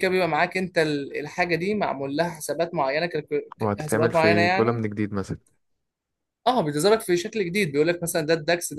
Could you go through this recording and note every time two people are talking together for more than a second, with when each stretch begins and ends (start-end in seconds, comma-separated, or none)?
3.6-4.8